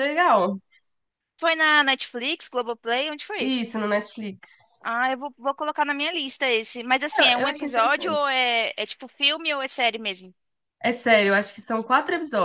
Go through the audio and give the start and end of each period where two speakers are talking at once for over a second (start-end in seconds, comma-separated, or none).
7.2-8.4